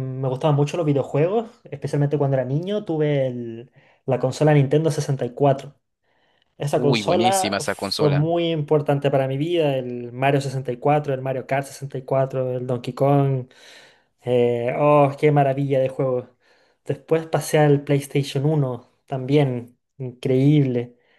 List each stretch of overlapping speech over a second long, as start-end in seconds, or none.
6.7-8.3